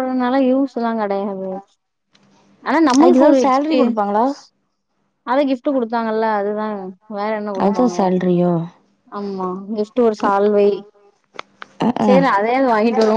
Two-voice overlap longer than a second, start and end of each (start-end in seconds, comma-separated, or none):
3.0-4.2